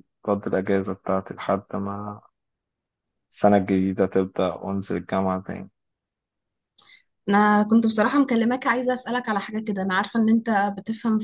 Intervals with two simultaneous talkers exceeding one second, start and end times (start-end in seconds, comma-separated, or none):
none